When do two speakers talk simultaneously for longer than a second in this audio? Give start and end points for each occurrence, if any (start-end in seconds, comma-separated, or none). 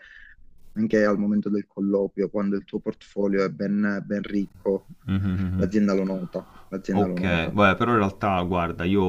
none